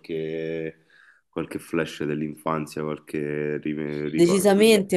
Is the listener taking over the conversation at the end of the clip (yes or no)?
yes